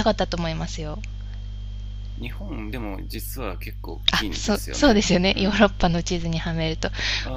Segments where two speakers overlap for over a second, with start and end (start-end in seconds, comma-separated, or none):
4.1-5.6